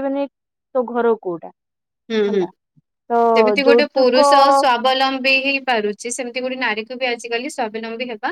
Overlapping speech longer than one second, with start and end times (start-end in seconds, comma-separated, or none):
none